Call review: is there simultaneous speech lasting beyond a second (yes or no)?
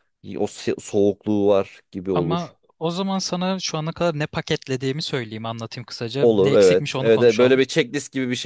yes